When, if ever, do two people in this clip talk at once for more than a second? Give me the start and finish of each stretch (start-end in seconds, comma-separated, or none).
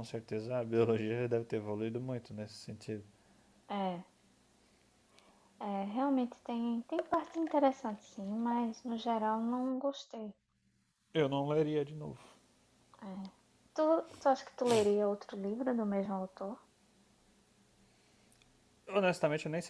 none